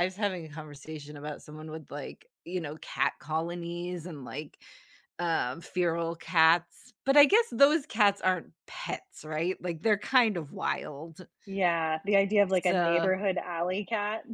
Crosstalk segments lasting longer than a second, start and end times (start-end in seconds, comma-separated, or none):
none